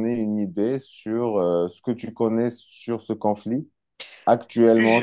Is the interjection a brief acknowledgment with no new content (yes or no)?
yes